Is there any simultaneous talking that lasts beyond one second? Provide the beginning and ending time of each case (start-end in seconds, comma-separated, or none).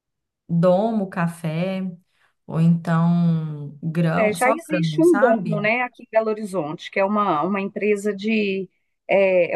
4.1-5.7